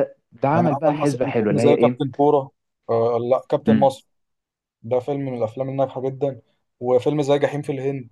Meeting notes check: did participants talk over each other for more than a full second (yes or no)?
yes